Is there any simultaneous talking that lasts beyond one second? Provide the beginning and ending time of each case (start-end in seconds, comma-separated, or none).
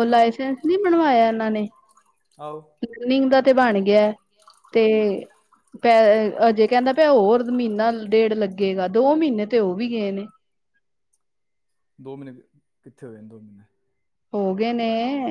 none